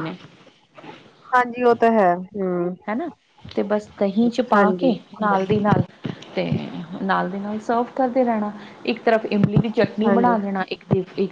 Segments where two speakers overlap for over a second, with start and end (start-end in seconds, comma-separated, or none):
none